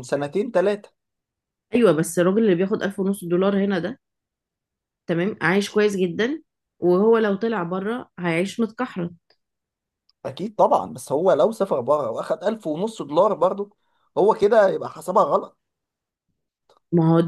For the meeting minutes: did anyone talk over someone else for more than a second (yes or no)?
no